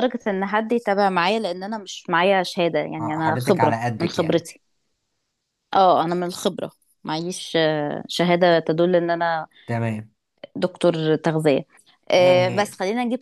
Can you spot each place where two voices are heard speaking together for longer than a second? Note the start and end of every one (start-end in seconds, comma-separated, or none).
3.0-4.4